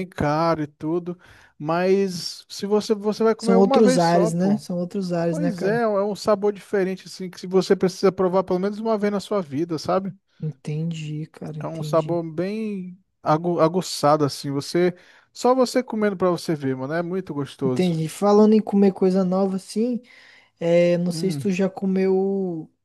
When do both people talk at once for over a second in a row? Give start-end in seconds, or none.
3.4-4.6